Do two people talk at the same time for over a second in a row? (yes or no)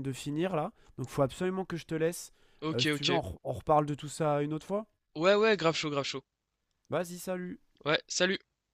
no